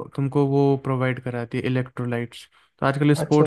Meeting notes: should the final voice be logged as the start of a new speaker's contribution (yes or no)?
no